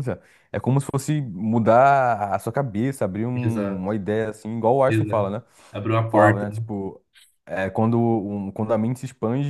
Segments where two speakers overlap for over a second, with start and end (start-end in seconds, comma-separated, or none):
none